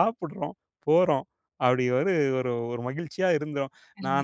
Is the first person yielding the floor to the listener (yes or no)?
yes